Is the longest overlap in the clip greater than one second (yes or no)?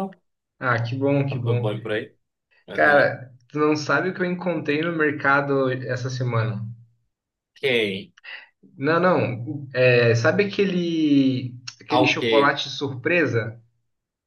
no